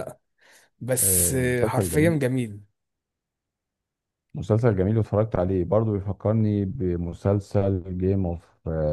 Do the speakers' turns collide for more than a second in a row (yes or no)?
yes